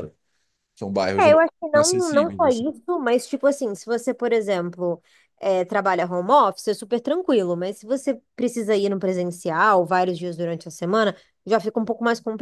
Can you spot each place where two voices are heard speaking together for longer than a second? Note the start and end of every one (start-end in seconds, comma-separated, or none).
1.2-2.7